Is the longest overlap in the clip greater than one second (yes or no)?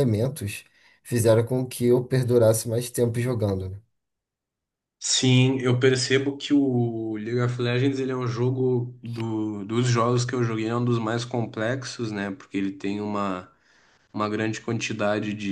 no